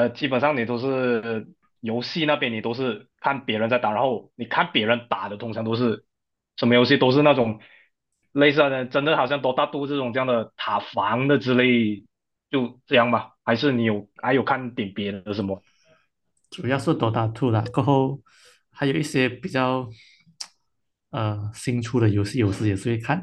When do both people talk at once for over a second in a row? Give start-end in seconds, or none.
none